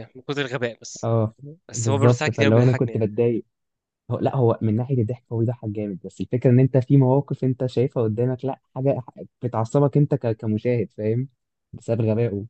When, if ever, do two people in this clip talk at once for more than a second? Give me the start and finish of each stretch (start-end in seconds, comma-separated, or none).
1.7-3.1